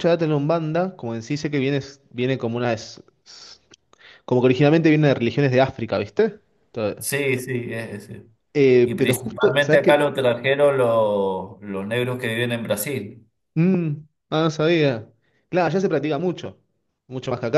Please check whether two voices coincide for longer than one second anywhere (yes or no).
yes